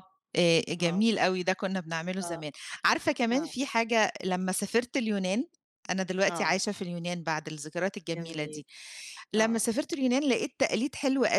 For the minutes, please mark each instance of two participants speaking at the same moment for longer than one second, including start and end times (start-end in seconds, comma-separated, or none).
none